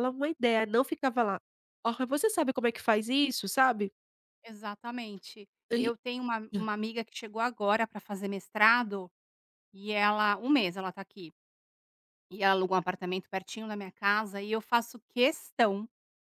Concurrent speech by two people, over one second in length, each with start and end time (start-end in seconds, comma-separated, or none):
none